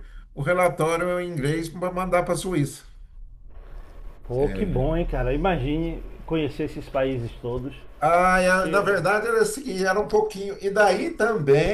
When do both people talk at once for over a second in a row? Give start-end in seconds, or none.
none